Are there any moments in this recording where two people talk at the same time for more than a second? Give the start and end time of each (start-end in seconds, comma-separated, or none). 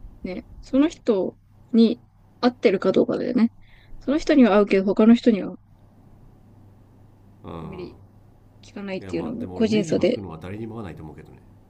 9.0-10.2